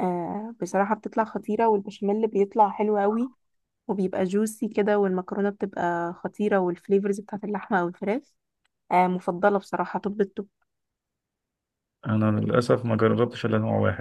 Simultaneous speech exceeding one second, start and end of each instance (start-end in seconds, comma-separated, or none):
none